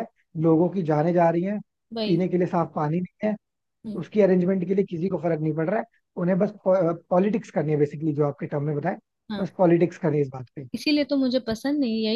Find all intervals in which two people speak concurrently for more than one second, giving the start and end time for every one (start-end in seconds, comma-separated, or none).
none